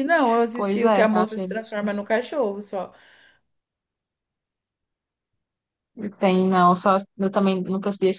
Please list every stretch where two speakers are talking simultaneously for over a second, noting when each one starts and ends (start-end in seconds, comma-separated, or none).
0.5-2.0